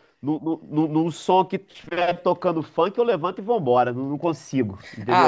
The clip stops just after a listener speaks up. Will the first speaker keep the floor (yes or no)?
no